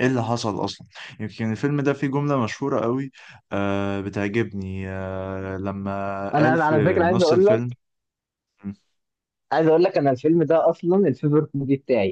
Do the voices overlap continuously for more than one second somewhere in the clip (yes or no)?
yes